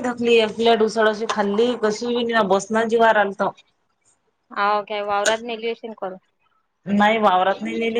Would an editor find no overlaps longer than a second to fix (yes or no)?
yes